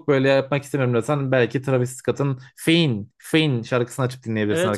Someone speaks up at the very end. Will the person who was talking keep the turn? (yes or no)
no